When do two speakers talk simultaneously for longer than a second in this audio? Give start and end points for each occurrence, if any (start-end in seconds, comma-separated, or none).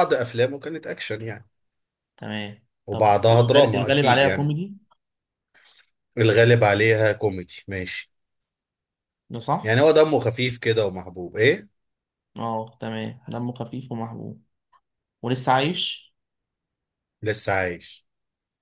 2.9-4.5